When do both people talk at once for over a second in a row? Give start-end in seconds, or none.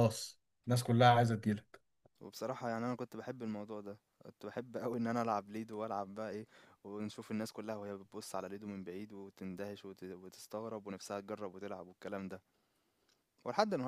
none